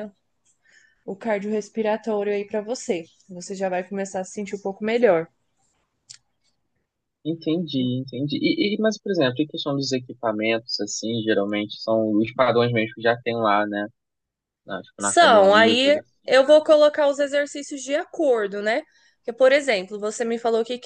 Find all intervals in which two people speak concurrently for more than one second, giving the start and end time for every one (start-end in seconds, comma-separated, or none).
15.0-16.6